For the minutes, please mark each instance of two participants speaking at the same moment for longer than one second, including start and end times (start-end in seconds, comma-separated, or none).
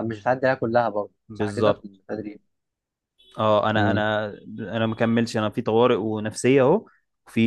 none